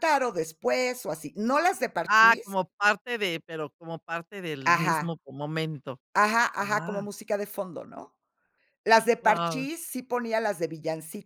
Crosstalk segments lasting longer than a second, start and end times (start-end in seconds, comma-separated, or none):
none